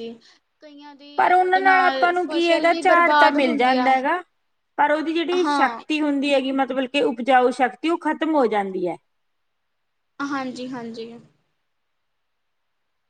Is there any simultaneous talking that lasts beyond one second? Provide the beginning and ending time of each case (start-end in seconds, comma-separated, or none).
2.2-3.9